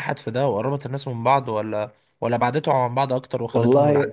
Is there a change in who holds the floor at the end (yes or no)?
yes